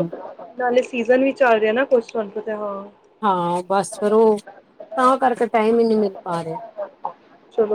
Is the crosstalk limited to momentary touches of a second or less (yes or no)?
yes